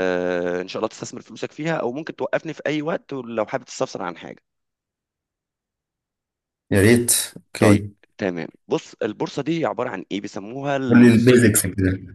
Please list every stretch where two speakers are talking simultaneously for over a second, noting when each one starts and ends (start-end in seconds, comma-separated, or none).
none